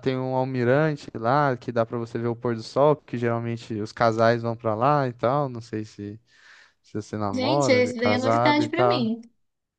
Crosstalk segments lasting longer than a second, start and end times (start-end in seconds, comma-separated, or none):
7.3-9.1